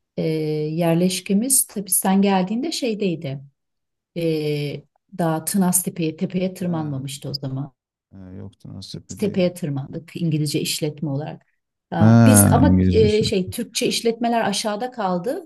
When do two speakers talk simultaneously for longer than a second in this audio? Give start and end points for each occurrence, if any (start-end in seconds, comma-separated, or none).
12.0-13.2